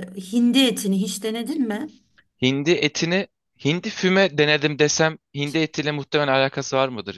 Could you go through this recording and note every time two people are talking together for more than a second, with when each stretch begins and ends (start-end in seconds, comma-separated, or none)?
none